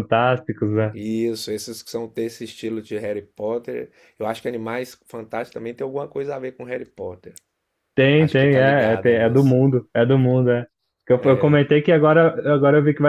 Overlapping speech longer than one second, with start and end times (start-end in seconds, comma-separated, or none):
8.1-9.7